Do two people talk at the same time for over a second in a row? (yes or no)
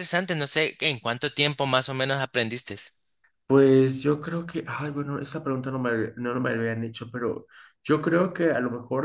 no